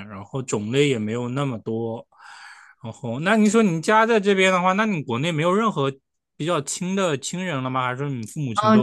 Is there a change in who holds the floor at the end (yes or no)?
yes